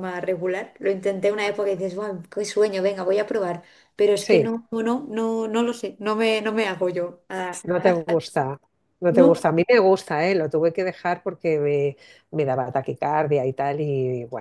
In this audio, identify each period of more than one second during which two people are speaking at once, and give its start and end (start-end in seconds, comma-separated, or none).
none